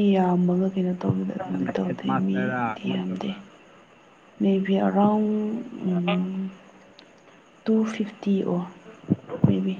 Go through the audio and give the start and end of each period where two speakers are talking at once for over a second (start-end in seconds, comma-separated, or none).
1.5-3.3